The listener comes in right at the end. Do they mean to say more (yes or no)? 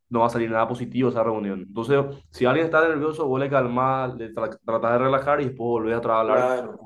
no